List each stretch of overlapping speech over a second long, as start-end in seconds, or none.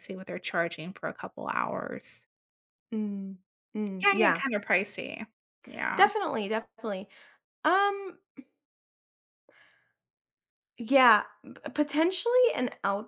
none